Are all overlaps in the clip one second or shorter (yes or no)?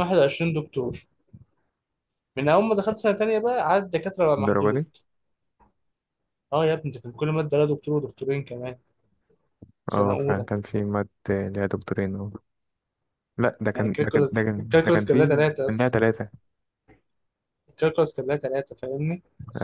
no